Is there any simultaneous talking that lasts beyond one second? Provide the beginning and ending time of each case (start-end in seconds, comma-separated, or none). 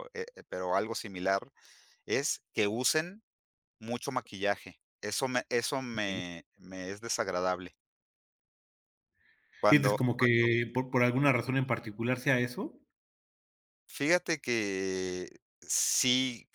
none